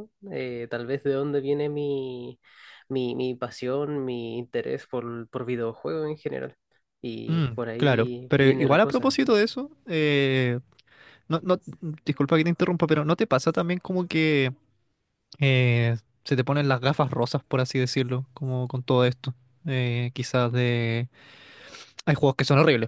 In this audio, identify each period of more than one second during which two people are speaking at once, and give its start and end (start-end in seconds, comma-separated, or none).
7.3-9.2